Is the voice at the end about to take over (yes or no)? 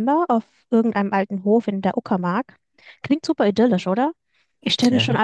no